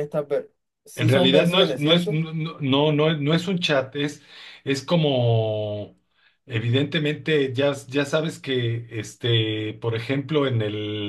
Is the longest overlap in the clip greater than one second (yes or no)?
yes